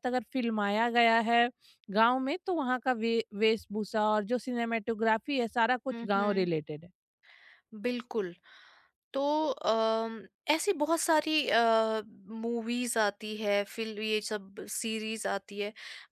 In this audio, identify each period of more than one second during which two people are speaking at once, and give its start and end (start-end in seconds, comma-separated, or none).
none